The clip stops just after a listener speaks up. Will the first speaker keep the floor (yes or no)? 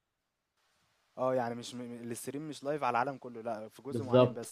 no